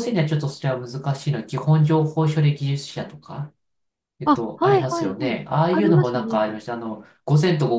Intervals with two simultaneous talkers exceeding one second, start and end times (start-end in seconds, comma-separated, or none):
4.2-6.5